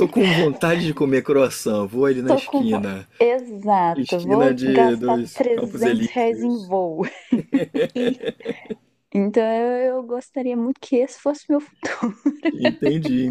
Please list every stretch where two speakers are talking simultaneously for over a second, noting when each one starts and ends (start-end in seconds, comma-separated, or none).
3.9-6.7